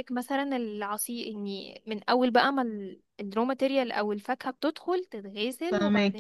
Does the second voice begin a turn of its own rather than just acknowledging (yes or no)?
no